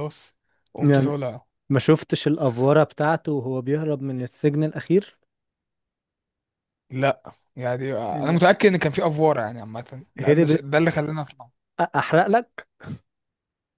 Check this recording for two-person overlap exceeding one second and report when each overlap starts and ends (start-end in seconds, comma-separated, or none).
none